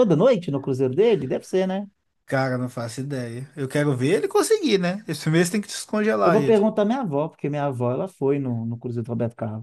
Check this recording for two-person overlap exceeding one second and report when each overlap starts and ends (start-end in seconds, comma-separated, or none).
none